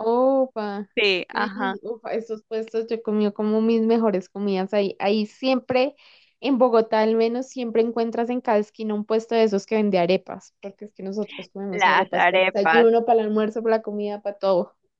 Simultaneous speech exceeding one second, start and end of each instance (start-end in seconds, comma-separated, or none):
11.7-12.9